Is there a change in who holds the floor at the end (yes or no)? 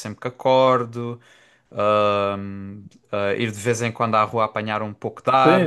yes